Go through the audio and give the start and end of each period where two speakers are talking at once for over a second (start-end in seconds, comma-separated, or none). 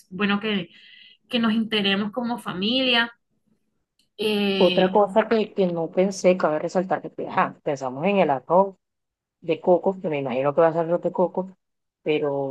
none